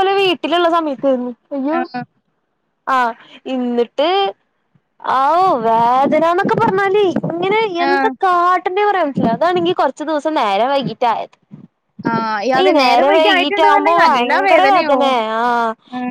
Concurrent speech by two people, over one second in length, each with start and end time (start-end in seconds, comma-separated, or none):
12.6-15.0